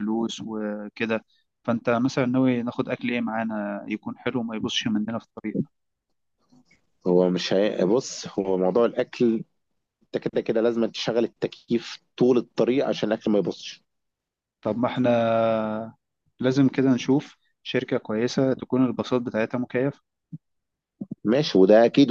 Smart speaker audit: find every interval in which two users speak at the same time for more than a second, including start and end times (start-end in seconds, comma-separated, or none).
none